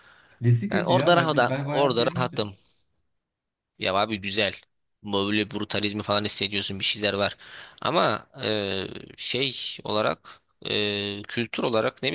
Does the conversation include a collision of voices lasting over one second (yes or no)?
yes